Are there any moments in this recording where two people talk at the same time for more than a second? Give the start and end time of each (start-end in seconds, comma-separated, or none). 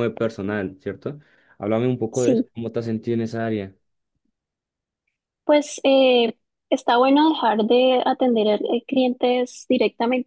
none